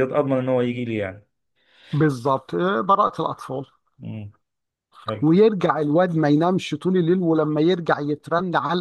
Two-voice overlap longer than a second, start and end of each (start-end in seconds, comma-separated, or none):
none